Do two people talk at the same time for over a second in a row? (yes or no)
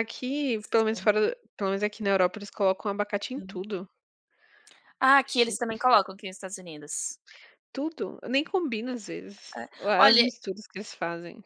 no